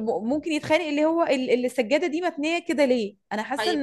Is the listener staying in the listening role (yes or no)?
no